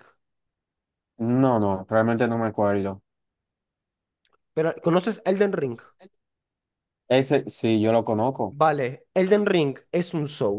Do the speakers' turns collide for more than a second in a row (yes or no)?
no